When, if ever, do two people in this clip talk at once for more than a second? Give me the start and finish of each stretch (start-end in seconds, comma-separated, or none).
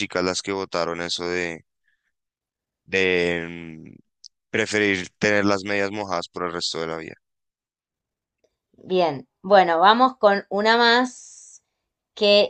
none